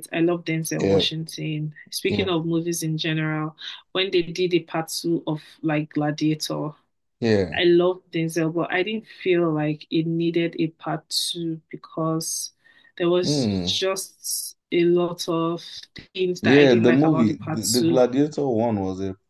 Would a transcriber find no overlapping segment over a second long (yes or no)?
no